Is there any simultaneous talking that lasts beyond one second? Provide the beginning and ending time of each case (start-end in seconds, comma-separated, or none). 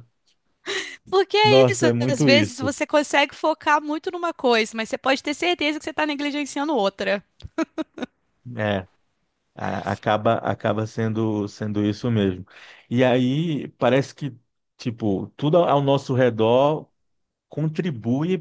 1.4-2.7